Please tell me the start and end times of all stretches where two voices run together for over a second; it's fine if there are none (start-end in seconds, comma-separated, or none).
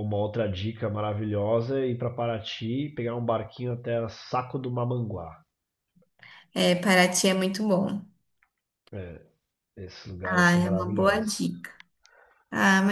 10.2-11.5